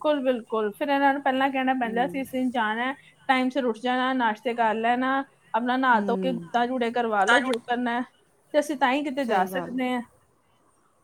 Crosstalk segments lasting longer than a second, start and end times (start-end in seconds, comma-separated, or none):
none